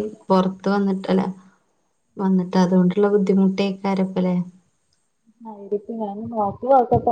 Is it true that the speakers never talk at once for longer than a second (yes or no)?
yes